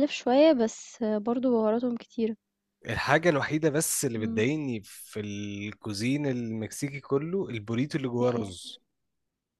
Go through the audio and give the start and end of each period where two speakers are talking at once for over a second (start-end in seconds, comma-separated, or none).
none